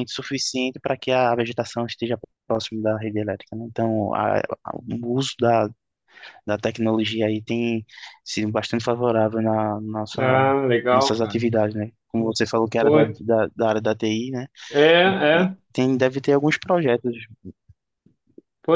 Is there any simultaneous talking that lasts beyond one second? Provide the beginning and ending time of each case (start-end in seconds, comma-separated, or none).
none